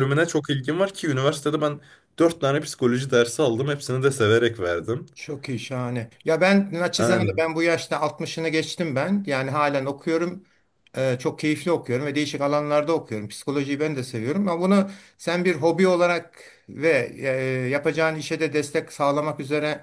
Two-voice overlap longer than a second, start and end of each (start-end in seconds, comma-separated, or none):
none